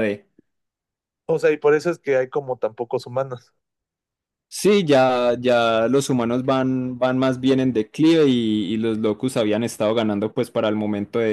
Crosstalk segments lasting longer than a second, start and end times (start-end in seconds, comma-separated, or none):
none